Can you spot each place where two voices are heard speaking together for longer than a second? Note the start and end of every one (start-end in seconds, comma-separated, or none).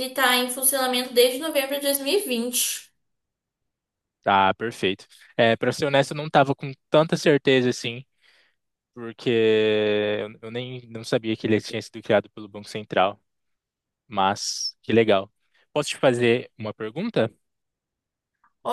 none